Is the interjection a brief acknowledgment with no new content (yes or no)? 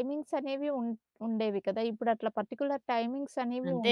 no